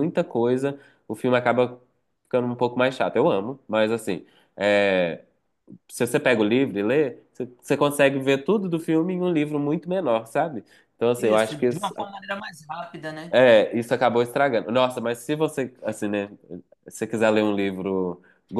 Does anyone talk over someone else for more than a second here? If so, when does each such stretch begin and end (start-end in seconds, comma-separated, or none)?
none